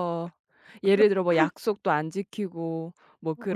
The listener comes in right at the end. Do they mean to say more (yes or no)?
yes